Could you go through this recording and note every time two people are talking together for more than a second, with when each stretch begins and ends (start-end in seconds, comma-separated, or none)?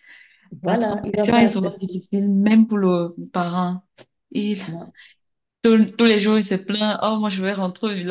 0.7-2.0